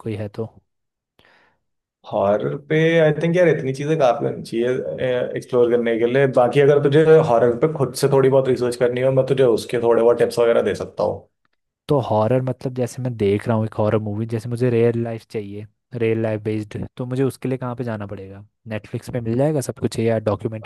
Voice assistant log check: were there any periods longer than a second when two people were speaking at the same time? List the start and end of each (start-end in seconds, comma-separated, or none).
none